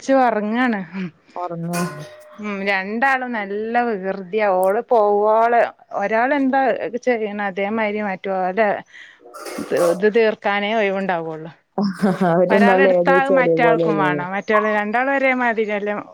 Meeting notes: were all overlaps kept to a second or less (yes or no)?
no